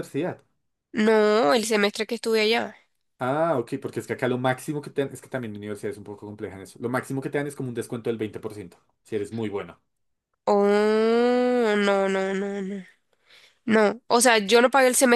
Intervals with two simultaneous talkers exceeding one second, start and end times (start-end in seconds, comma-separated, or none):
none